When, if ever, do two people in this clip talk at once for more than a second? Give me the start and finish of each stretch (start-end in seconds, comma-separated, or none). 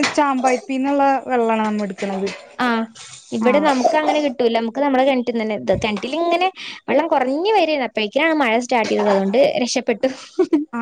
none